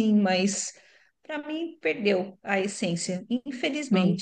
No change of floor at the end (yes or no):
no